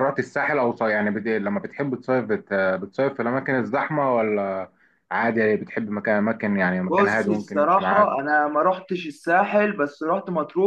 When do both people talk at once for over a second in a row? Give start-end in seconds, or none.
6.9-8.2